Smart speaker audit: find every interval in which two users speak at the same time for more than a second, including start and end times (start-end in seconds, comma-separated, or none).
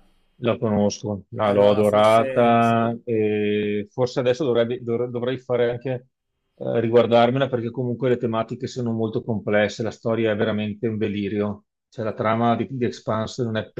1.4-2.9